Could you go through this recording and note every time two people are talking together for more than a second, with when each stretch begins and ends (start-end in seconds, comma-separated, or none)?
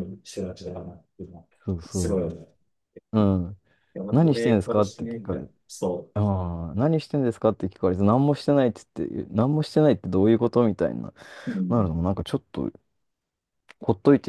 4.1-5.5